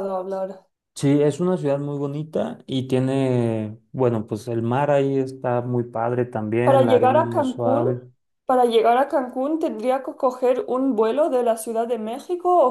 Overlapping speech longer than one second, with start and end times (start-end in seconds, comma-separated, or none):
6.6-7.9